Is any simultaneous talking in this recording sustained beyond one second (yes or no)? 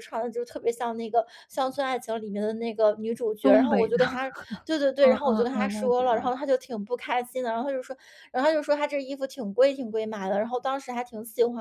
yes